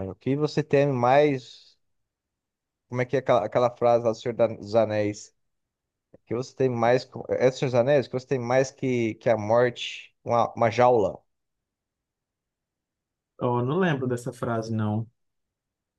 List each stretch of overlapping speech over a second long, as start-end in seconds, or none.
none